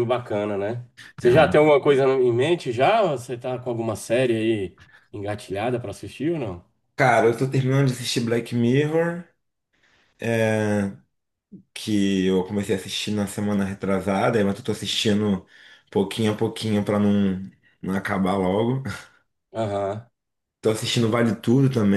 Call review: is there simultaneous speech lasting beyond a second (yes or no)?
no